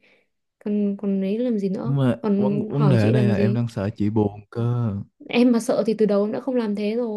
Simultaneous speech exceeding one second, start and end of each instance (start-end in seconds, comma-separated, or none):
1.8-3.6